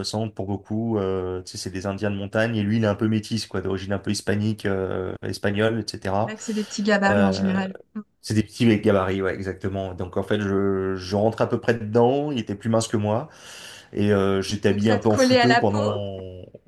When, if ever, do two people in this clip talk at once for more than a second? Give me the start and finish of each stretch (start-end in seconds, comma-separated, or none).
14.7-16.0